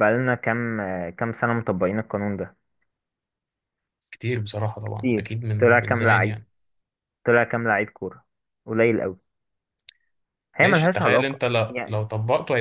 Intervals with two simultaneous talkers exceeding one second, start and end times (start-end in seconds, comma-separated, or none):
4.9-6.4, 10.6-12.0